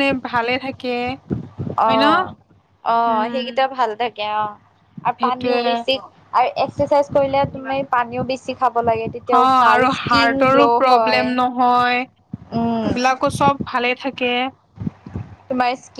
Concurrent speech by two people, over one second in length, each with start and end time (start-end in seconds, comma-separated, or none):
9.3-11.2